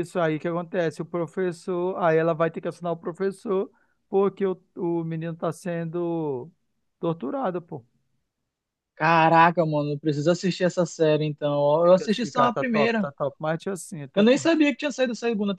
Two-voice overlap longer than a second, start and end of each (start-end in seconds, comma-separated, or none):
11.8-13.1